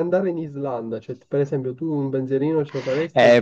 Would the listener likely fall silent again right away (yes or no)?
no